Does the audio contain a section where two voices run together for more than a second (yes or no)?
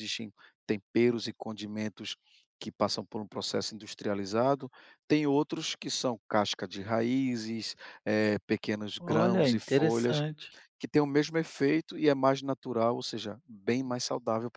yes